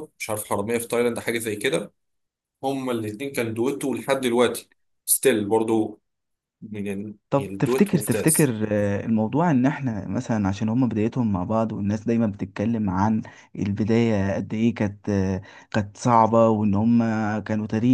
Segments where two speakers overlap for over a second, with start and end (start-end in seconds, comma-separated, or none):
7.3-8.5